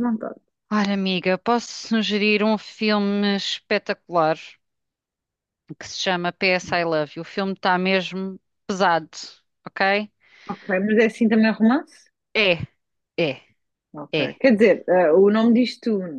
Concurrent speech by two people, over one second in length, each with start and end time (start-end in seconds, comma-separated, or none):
none